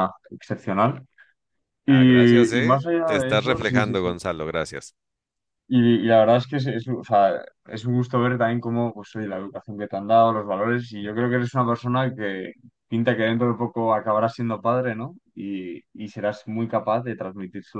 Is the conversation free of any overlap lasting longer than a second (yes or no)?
no